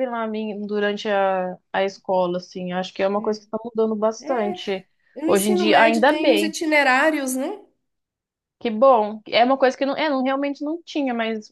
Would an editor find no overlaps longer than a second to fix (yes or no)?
no